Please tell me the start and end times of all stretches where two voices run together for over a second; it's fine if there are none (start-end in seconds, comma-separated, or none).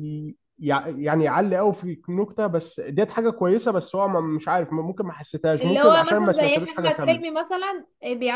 5.6-7.2